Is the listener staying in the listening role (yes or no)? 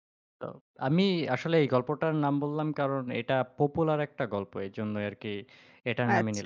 no